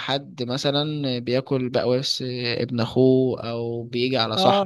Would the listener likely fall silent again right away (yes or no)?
no